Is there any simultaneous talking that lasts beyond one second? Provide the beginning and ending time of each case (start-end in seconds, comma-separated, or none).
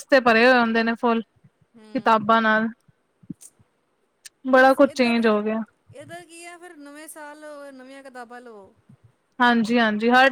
none